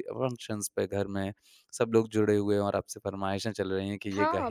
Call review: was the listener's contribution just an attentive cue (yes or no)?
no